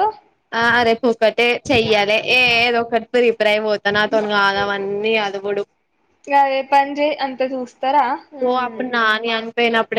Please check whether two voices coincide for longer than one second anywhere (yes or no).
no